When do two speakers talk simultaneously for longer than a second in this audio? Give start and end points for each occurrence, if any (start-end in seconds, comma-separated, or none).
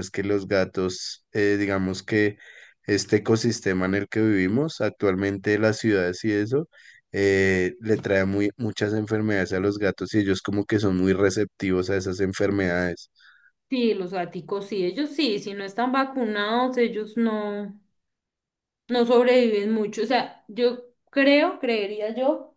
none